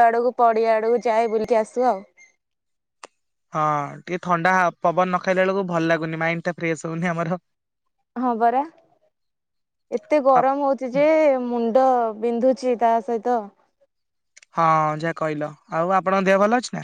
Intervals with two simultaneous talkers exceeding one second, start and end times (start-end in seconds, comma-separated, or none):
none